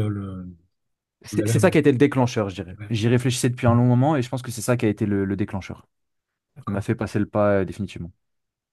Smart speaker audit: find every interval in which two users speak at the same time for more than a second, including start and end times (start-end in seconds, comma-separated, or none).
1.3-2.9